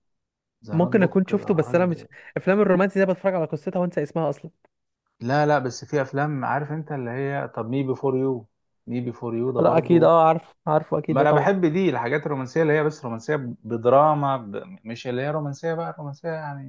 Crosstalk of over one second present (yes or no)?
yes